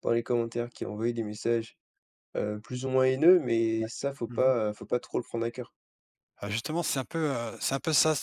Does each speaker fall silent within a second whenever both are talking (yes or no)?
yes